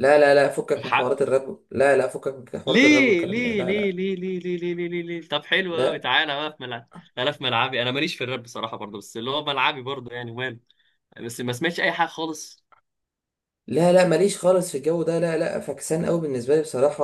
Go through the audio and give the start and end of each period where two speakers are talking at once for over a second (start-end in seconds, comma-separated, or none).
2.7-4.0